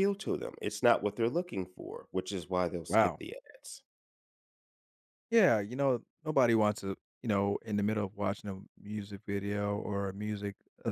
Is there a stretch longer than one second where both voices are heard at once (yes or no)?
no